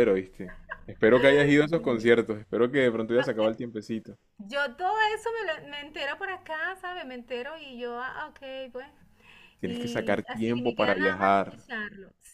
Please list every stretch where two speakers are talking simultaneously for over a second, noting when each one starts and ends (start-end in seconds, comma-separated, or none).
9.7-11.6